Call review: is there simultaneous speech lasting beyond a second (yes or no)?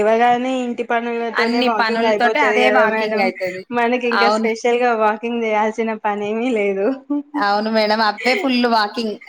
yes